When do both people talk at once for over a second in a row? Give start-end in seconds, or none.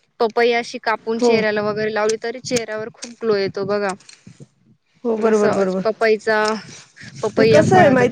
none